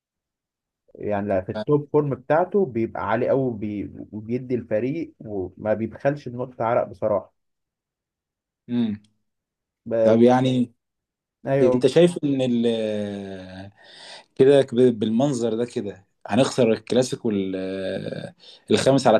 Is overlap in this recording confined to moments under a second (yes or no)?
yes